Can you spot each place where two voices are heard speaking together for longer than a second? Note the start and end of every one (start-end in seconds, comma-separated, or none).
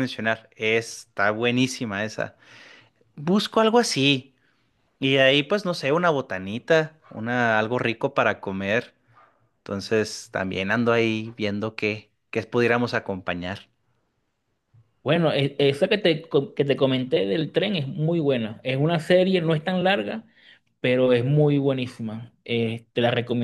none